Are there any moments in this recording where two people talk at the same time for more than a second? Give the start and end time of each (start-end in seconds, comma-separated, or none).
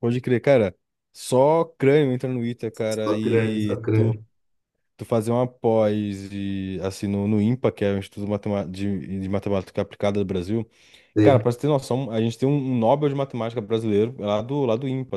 2.9-4.2